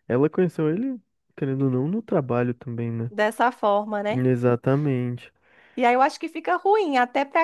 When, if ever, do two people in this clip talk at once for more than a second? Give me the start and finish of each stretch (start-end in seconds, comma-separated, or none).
none